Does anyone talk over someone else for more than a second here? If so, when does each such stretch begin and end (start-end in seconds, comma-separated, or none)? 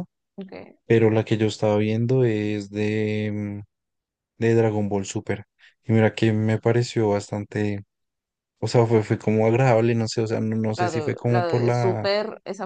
10.8-12.1